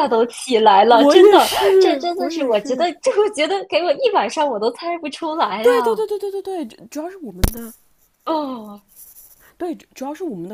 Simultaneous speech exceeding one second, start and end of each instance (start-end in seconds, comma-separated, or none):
0.9-2.9